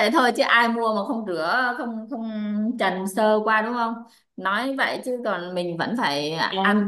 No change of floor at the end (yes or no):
no